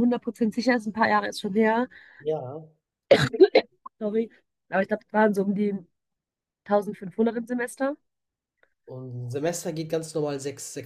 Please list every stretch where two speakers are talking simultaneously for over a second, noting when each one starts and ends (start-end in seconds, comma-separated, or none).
none